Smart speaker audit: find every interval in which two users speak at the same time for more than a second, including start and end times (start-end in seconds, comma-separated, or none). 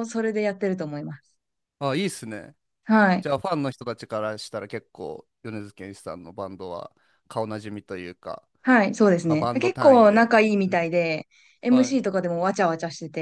9.2-10.9